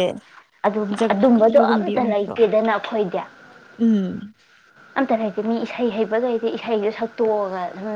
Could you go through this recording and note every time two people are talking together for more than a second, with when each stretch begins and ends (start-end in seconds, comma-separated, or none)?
1.0-2.4